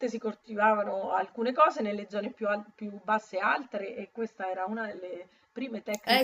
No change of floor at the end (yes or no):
no